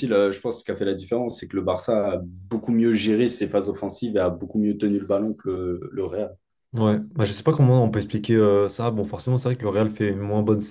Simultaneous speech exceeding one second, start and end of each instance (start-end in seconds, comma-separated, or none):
none